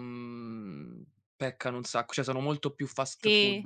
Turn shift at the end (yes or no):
yes